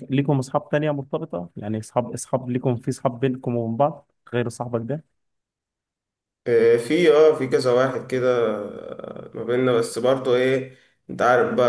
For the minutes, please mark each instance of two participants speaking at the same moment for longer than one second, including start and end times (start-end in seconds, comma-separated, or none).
none